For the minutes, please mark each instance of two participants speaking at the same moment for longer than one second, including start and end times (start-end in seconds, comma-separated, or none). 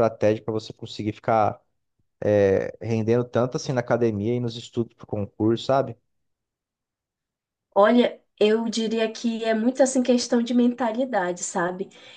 none